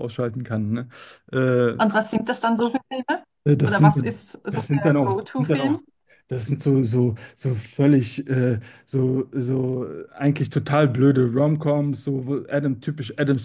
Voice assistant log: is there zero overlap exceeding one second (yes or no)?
no